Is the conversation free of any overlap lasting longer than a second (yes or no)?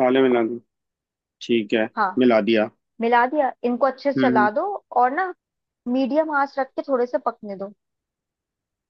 yes